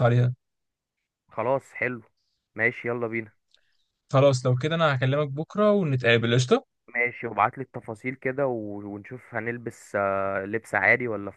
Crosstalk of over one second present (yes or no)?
no